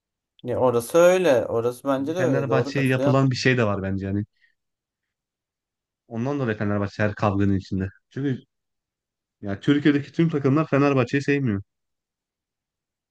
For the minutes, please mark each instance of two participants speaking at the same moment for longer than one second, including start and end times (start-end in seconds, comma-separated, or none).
2.0-3.2